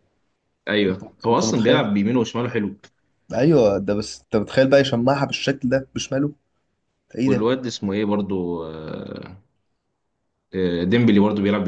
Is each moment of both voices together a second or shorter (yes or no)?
yes